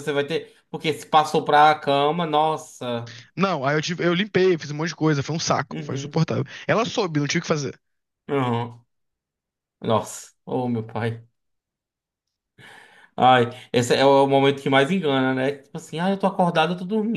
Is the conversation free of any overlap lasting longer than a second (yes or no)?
yes